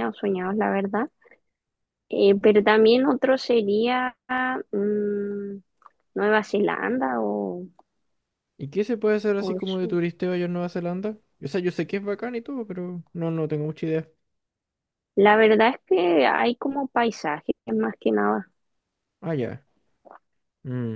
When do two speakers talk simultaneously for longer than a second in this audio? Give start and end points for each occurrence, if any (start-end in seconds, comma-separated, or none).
none